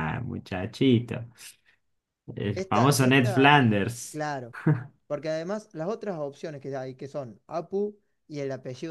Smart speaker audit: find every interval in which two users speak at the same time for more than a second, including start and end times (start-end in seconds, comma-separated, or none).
2.5-4.2